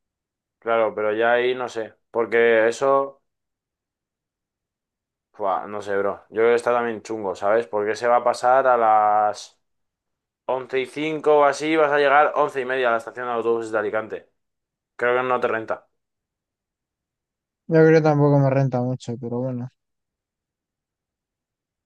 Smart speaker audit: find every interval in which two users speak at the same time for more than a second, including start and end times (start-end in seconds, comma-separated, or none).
none